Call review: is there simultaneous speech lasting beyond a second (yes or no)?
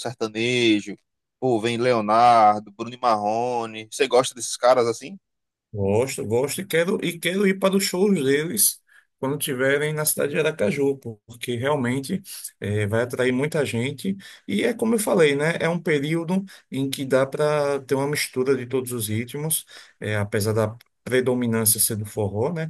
no